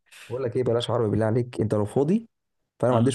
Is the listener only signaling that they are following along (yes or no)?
yes